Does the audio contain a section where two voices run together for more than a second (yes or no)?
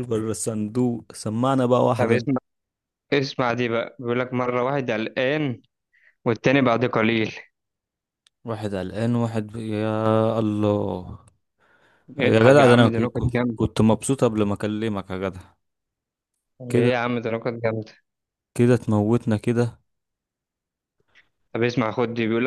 yes